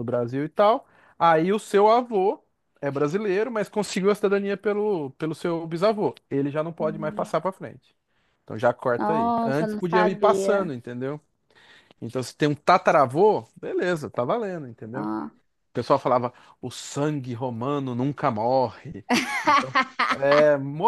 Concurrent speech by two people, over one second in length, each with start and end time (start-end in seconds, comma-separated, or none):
9.0-10.7